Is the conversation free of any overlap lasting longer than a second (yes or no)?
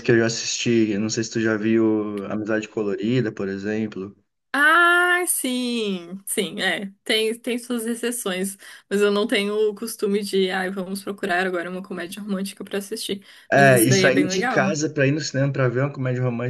no